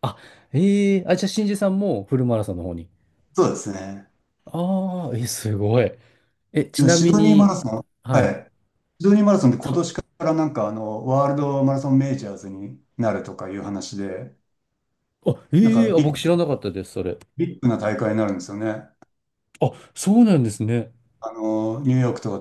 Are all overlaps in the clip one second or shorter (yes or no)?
no